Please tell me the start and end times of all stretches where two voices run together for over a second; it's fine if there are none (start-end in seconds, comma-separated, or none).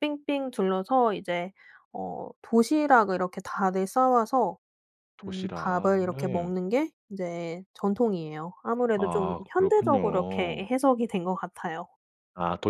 5.2-6.5, 8.9-10.6